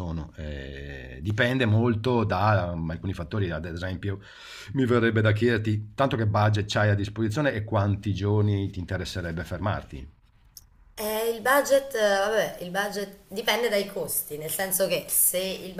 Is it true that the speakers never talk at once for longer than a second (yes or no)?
yes